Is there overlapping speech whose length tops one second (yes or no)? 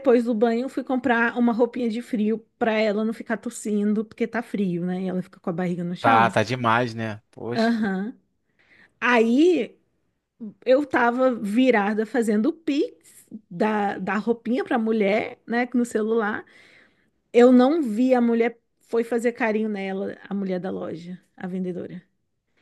no